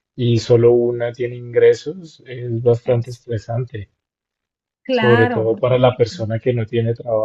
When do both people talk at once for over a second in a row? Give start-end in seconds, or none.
4.9-6.1